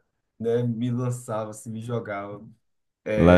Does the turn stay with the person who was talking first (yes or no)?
no